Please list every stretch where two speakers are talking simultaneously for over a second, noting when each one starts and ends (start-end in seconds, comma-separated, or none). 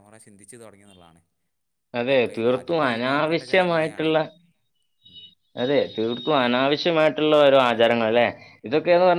2.0-4.1